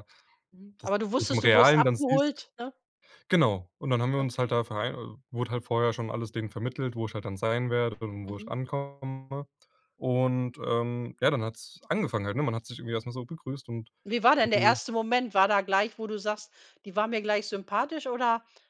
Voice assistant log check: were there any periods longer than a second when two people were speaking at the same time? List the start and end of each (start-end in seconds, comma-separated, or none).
0.8-2.4